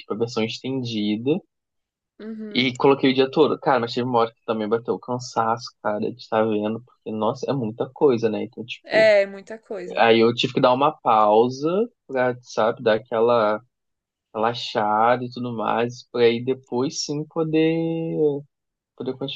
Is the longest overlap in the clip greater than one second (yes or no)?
no